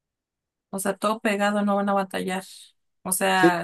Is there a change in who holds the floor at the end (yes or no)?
no